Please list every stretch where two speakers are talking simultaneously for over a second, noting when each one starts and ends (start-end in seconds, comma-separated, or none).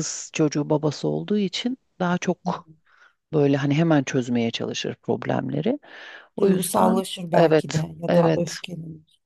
6.4-8.6